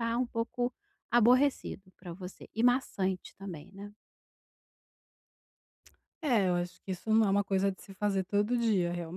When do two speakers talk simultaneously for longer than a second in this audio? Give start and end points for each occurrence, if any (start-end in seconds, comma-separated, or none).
none